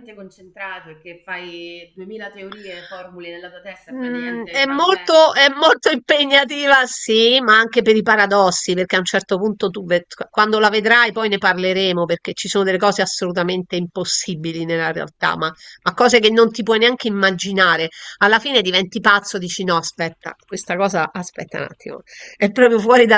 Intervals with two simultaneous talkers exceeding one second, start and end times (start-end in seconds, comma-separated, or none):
3.9-5.3